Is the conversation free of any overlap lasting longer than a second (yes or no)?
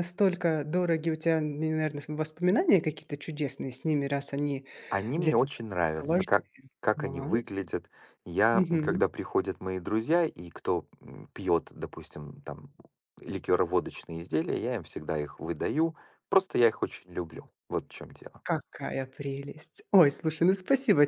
no